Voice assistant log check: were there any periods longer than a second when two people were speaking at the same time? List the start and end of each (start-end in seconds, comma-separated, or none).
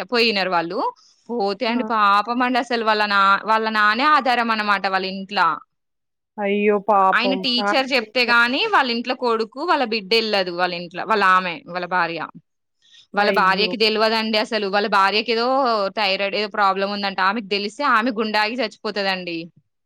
7.2-8.7